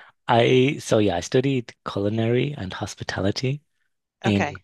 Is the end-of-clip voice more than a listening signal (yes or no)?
no